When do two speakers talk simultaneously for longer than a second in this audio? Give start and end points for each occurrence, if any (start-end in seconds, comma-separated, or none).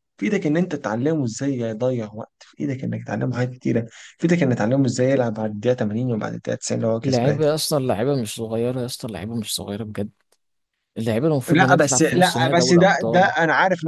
11.5-13.3